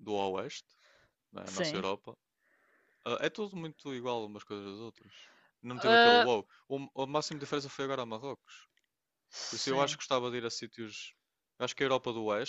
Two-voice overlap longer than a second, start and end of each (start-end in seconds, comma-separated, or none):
none